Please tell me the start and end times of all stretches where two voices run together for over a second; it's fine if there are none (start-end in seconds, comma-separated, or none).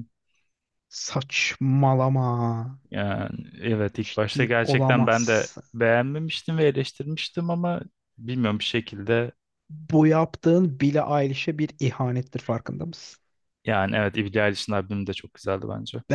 4.0-5.6